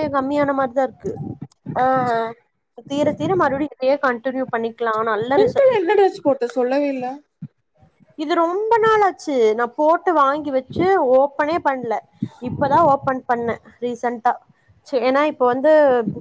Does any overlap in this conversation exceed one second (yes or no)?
no